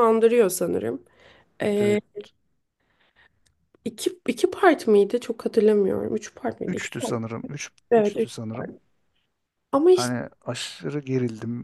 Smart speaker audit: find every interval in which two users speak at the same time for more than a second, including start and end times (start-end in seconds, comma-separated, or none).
6.7-8.7